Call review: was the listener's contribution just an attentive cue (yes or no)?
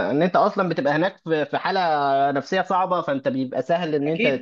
no